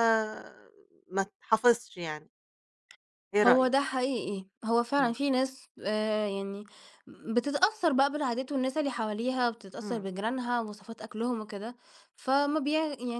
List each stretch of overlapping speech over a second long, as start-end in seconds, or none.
none